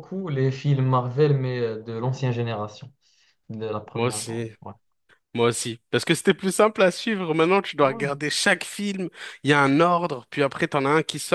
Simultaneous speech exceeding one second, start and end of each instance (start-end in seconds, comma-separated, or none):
none